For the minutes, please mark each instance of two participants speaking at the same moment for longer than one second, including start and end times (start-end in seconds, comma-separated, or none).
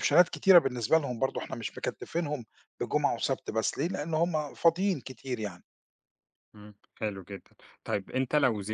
none